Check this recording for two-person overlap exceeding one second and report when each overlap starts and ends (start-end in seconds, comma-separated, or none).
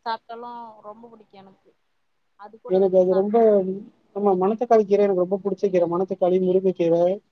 none